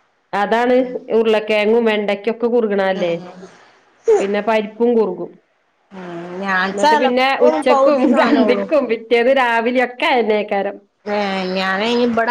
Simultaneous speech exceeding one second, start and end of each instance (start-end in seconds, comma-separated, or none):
6.7-8.6